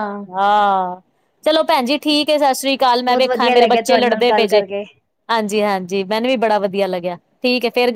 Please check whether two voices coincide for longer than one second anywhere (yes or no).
yes